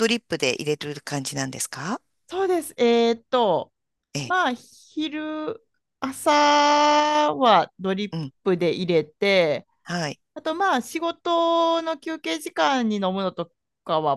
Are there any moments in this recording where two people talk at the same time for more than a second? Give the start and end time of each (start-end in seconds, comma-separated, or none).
none